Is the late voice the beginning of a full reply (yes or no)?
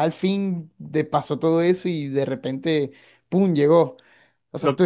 no